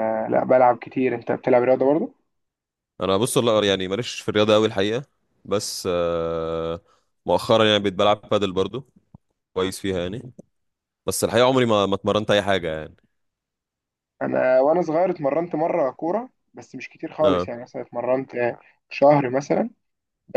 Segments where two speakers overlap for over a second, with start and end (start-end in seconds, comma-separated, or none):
none